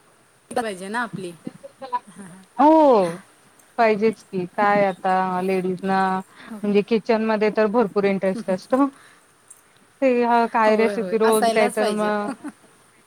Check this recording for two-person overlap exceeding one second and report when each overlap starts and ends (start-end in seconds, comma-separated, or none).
10.7-12.1